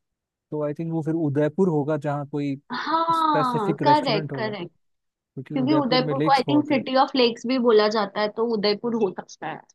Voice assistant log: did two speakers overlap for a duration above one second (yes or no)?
yes